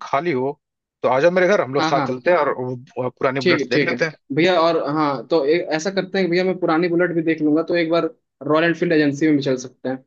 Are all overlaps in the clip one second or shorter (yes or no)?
yes